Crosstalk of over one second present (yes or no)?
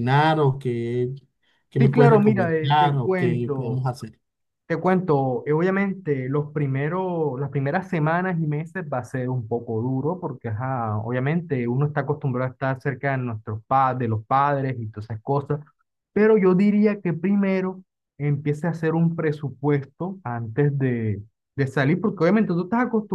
yes